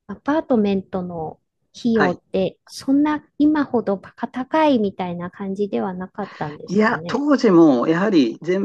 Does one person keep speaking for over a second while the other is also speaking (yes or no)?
no